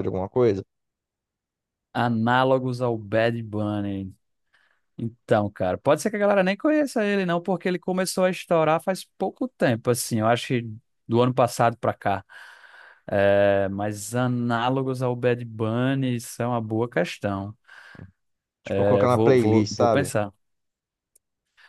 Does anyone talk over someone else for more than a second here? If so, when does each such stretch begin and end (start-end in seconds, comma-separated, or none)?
18.7-20.1